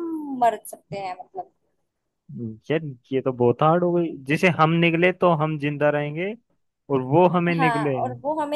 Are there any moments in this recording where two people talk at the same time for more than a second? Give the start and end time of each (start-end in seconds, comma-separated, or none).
none